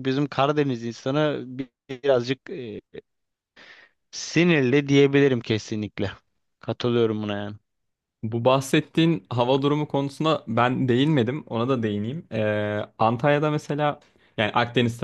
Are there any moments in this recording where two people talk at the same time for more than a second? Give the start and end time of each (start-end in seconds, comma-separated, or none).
none